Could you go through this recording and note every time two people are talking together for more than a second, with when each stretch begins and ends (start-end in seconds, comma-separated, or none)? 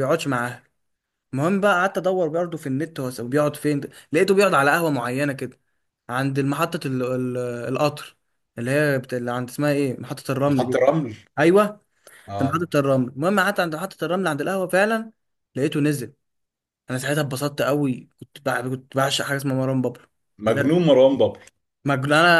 none